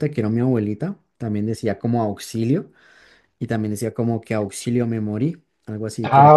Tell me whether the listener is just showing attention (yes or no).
no